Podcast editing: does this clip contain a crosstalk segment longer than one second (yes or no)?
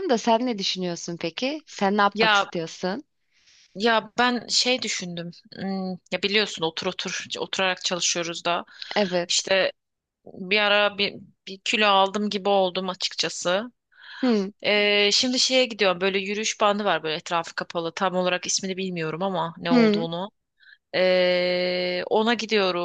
no